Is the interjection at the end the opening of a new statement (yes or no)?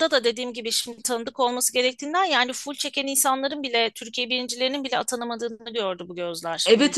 no